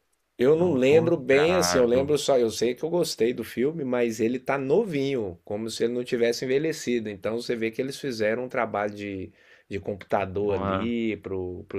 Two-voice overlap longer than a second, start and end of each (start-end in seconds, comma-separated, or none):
0.6-2.2